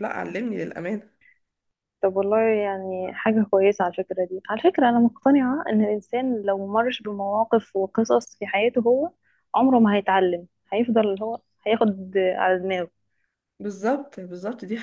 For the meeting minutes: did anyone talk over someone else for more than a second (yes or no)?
no